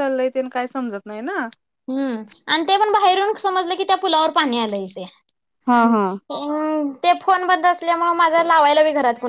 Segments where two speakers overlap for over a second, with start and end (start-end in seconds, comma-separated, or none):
none